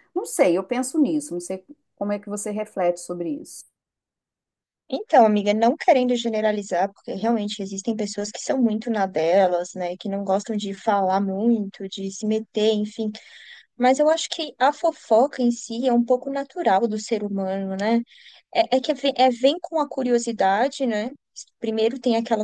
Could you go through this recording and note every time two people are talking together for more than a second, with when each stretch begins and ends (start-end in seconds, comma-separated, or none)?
none